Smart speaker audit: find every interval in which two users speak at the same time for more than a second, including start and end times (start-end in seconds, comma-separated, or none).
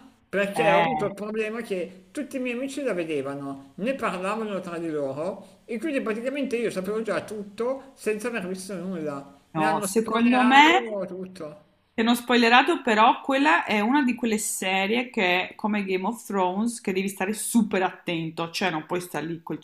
9.5-10.9